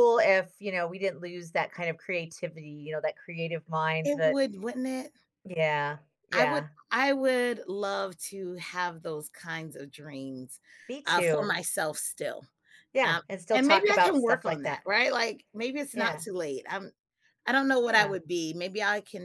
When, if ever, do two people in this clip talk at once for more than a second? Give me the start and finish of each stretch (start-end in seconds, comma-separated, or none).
13.0-14.9